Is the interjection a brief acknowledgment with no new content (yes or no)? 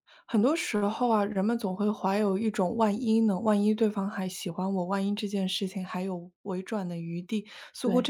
yes